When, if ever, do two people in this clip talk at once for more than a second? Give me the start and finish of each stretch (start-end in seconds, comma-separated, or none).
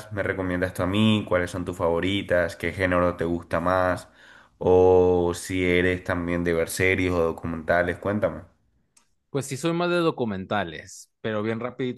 none